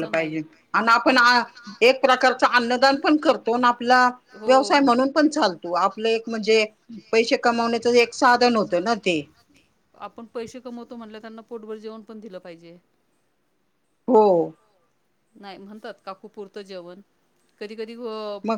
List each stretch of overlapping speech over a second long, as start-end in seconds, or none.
none